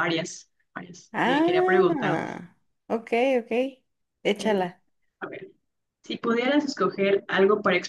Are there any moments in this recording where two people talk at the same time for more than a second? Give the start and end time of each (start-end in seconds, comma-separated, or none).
1.1-2.3